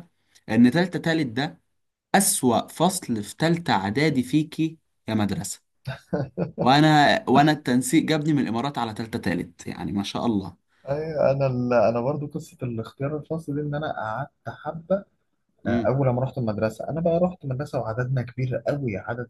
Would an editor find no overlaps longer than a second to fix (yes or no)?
yes